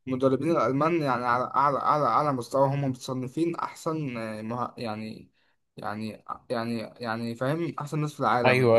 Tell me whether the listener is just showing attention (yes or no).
no